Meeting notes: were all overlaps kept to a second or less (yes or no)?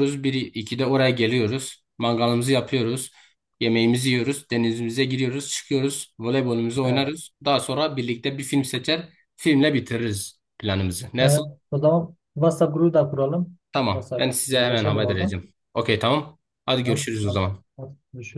no